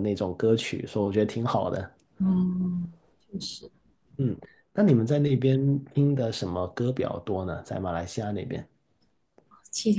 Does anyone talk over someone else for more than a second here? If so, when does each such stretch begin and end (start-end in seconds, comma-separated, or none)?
none